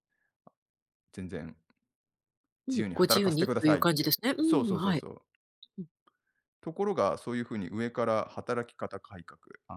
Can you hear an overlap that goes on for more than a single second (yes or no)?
yes